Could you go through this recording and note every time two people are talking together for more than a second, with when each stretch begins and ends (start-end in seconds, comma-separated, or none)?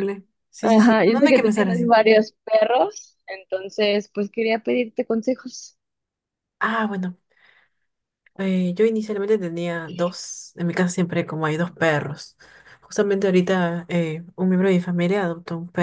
0.6-1.9